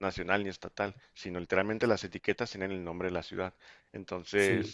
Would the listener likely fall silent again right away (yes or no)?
yes